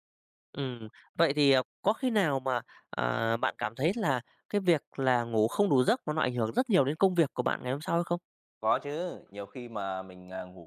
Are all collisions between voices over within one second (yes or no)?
yes